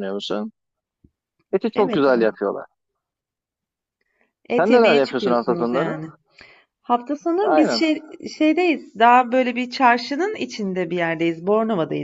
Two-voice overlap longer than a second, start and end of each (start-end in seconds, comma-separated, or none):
4.5-6.0